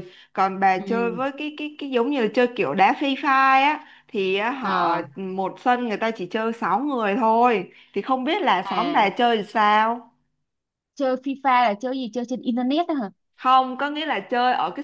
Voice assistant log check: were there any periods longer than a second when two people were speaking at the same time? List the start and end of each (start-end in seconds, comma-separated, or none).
none